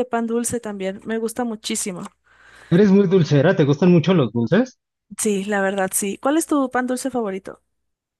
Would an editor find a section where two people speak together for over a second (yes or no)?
no